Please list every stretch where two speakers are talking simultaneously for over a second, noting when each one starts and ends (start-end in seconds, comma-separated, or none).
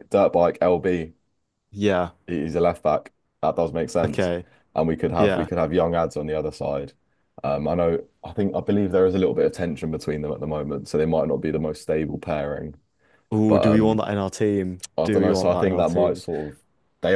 15.0-16.2